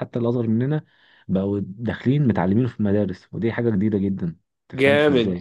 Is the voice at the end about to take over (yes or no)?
yes